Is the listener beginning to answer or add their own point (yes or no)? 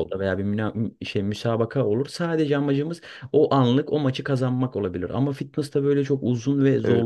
yes